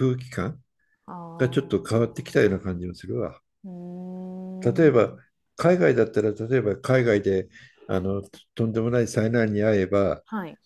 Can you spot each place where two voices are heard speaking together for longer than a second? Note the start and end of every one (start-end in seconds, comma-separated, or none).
1.4-2.6